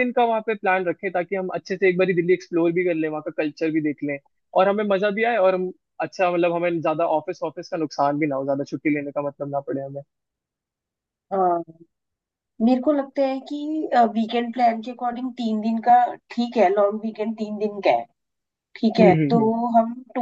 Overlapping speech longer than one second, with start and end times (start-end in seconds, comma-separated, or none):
none